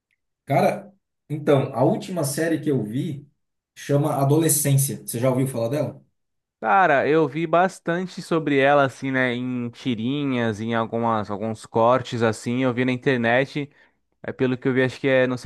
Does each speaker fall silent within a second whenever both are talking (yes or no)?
yes